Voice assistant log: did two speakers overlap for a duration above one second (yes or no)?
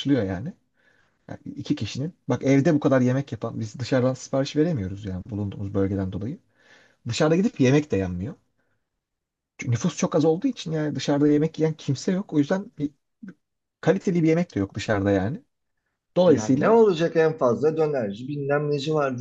no